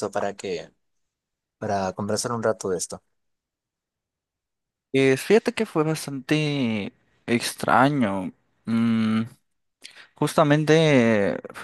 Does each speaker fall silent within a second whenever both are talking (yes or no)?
yes